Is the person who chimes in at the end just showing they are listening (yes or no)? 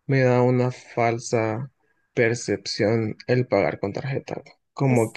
yes